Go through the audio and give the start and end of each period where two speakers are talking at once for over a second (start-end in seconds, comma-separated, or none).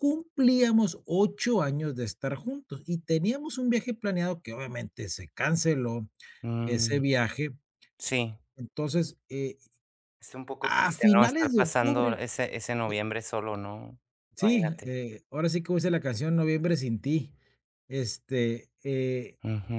10.6-12.2